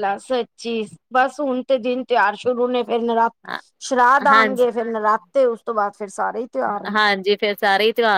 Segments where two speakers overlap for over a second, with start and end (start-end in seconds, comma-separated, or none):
none